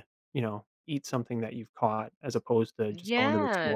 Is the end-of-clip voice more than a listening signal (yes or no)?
yes